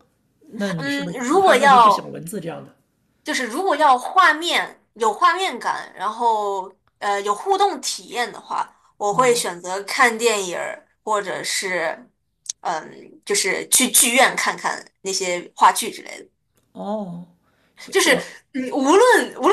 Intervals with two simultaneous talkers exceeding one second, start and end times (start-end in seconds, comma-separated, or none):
0.8-2.2